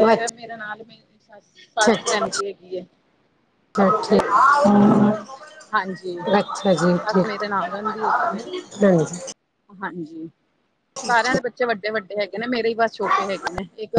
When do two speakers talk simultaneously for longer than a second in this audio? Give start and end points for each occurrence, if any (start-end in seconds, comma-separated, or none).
none